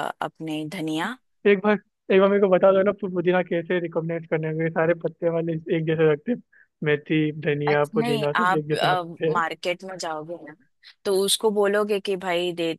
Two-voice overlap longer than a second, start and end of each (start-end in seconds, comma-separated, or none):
7.7-9.3